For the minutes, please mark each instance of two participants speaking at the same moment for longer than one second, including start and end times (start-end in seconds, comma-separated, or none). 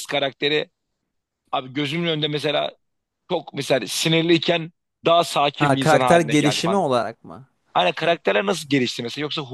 5.6-6.8